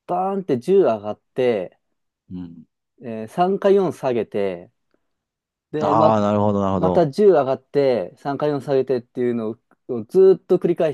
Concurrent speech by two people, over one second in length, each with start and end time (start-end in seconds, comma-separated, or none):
none